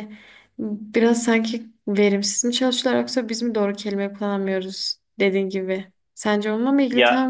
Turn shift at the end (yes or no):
no